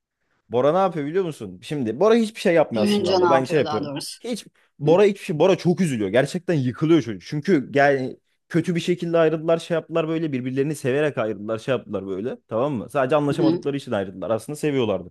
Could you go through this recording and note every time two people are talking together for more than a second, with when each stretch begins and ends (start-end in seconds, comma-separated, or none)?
2.7-4.2